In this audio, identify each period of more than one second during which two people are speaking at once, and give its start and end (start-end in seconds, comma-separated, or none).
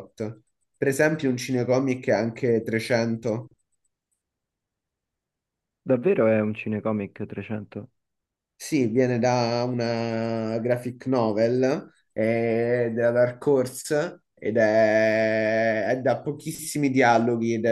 none